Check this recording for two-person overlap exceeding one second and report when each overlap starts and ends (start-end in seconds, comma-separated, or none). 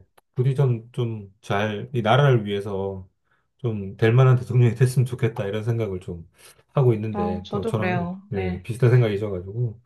7.1-8.7